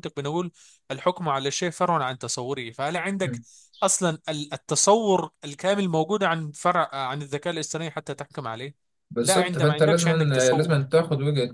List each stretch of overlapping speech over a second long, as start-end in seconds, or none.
9.2-10.8